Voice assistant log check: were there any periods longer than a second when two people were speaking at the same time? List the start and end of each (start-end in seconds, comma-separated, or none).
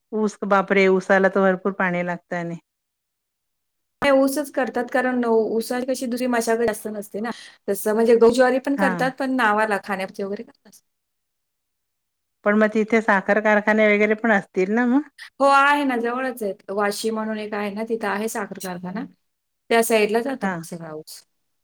none